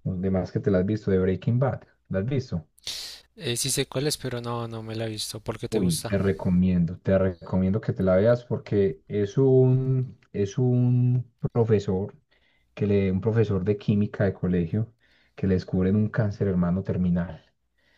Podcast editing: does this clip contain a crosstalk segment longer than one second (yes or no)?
no